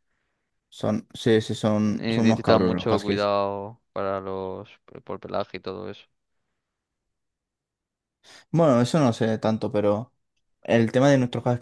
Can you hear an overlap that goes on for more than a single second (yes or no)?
yes